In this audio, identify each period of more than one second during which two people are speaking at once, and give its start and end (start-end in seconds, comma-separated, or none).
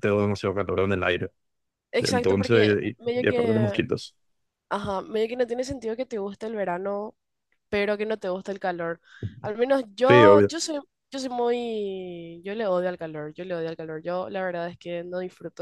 2.0-3.8